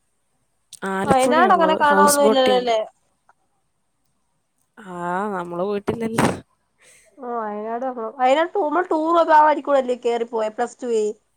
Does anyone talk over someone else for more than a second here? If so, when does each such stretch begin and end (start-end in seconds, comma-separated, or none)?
1.1-2.6